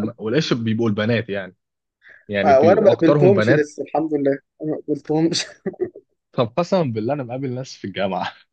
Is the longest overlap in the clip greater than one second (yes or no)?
yes